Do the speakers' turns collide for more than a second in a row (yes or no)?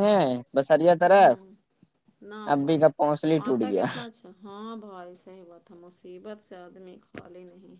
no